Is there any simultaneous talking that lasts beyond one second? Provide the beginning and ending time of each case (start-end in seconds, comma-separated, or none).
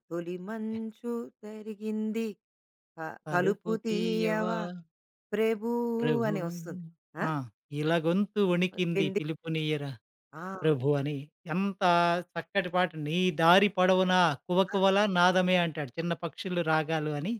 3.2-4.5